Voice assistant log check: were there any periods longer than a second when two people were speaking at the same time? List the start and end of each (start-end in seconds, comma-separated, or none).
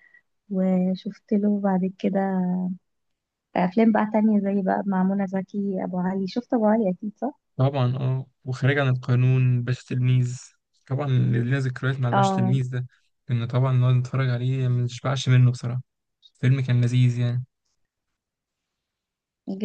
none